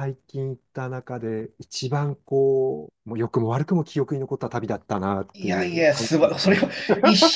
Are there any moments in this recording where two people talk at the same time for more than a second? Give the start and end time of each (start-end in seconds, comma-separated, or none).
5.3-6.6